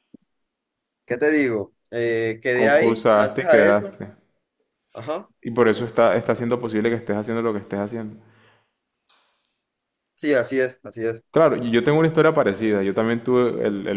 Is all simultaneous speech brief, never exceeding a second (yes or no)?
no